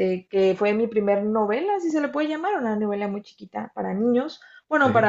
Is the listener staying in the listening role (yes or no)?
yes